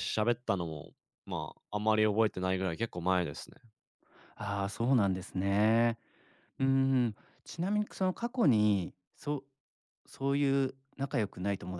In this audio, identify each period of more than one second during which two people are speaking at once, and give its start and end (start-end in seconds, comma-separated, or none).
none